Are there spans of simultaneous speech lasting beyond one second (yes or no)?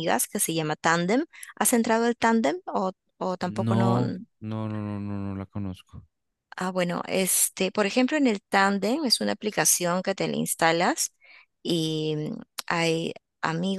no